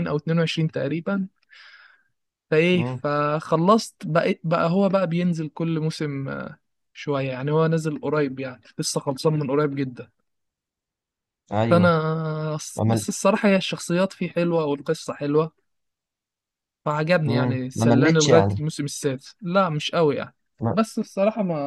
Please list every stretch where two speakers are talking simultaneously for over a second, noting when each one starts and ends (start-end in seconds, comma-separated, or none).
17.2-18.6